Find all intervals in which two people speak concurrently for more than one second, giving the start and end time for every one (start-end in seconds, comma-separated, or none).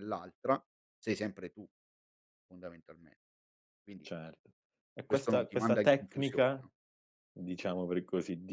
5.1-6.7